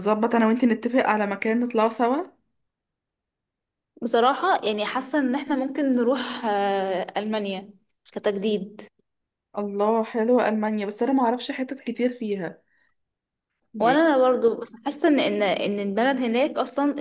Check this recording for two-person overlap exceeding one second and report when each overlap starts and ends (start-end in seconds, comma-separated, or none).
none